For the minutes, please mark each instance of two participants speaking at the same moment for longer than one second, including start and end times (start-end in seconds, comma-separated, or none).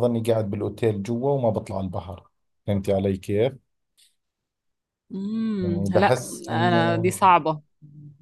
5.6-7.1